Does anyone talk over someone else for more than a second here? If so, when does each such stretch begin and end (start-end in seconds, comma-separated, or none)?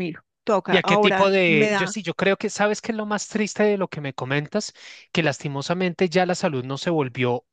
0.7-1.9